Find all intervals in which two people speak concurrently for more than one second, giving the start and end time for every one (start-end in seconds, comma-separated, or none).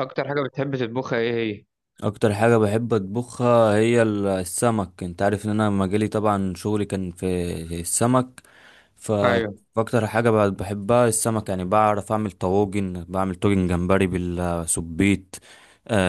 none